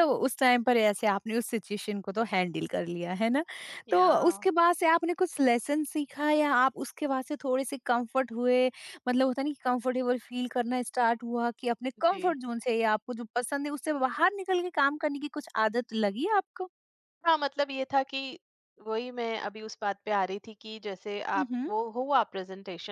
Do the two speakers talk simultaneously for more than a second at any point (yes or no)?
no